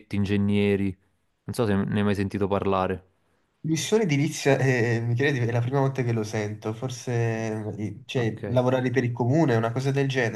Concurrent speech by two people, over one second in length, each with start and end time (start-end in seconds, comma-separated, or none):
none